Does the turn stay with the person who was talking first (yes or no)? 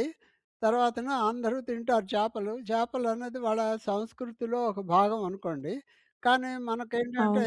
yes